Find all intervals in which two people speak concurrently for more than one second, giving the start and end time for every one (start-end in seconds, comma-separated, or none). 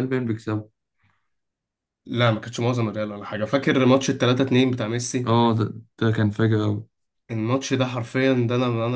none